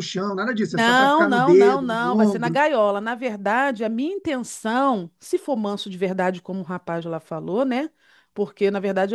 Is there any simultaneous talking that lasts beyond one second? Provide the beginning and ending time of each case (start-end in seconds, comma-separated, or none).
0.7-2.6